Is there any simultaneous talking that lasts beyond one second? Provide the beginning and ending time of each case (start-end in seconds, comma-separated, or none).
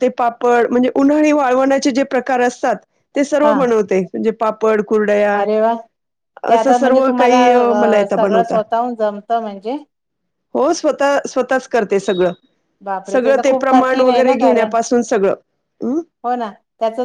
13.1-14.7